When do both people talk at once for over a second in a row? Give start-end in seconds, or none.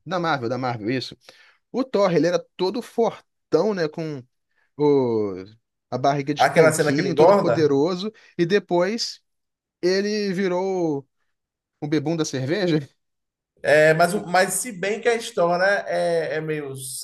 6.4-7.7